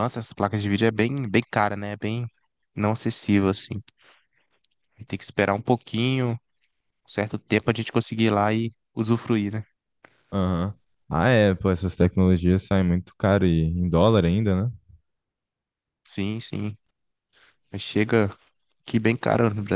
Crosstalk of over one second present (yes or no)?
no